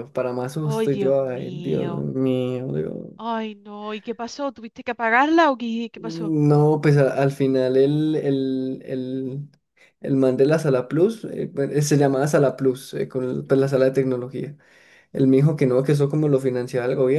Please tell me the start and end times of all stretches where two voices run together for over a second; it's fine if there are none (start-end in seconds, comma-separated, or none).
0.6-2.1